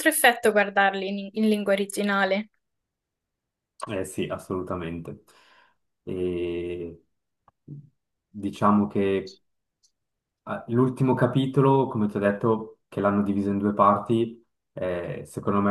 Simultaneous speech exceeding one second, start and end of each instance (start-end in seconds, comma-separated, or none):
none